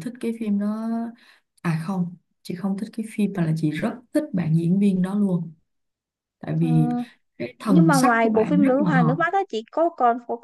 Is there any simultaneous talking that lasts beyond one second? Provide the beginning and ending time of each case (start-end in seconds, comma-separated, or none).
7.7-9.2